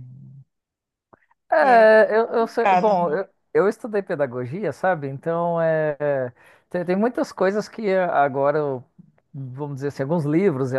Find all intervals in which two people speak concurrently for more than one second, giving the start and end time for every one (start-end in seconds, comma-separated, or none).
1.6-3.2